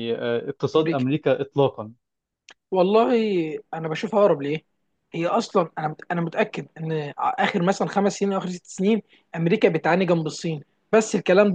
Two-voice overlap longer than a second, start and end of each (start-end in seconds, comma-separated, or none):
none